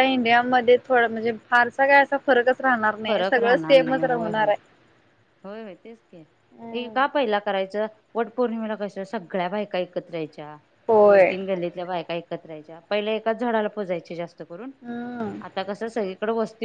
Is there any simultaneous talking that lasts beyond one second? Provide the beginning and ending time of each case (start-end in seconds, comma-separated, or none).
3.1-4.5